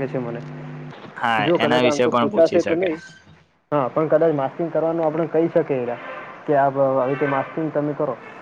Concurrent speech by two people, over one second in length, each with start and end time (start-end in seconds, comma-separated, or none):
1.4-2.9